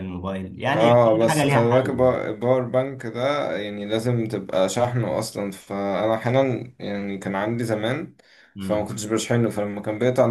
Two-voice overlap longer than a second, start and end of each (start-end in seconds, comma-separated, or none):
0.7-2.2